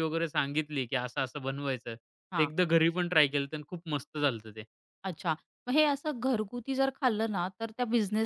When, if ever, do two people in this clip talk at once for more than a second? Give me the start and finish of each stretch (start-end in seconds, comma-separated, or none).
none